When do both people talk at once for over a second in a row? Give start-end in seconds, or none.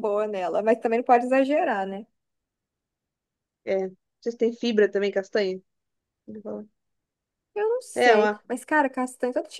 none